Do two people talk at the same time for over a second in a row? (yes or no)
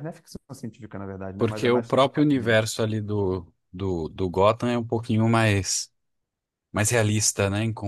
yes